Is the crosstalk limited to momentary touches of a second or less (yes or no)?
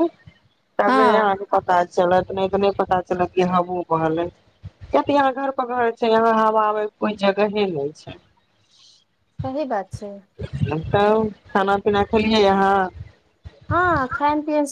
yes